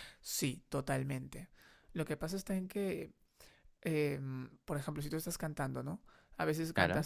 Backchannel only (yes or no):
yes